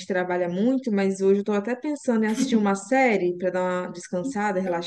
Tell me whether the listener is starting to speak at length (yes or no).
yes